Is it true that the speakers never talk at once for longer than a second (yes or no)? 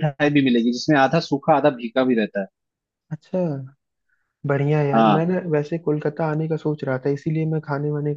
yes